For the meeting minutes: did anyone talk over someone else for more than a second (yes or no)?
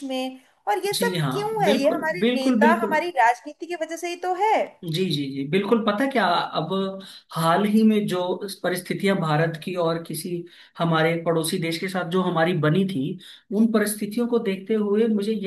yes